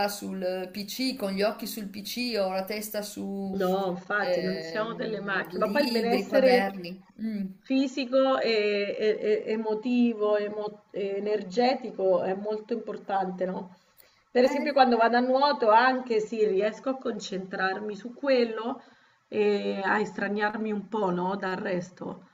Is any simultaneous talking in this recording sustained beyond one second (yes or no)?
yes